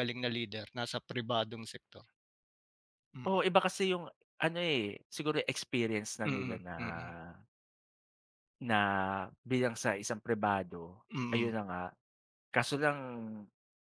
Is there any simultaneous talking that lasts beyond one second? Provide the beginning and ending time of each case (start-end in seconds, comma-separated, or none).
none